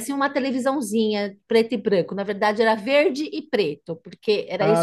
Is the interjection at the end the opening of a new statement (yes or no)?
yes